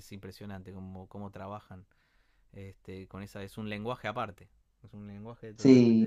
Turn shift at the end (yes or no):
yes